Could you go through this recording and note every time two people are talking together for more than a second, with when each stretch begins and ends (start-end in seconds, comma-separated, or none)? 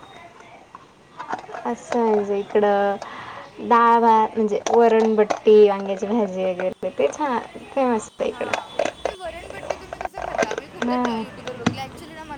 none